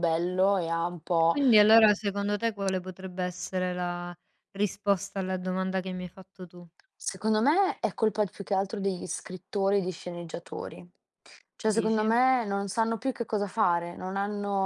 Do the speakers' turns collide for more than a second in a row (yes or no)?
no